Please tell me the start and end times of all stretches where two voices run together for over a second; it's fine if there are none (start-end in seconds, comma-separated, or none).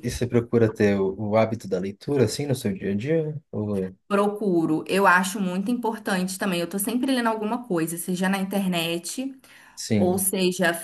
none